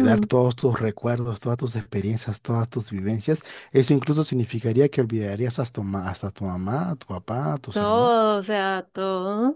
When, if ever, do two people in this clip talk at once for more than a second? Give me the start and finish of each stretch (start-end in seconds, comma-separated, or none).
none